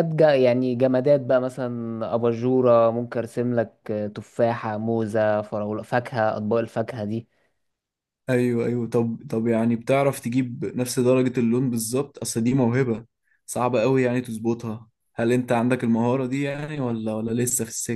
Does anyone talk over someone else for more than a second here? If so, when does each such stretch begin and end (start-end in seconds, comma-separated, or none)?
none